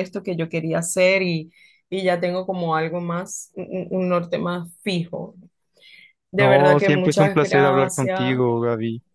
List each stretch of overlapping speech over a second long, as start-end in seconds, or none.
6.4-8.4